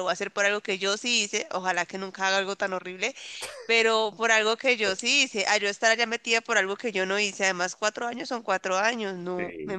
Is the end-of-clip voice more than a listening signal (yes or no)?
yes